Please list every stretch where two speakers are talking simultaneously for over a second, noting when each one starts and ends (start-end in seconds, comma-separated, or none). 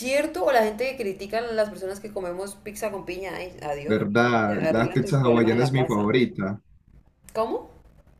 3.9-6.2